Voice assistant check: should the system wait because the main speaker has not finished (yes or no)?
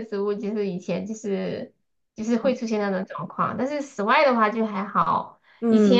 yes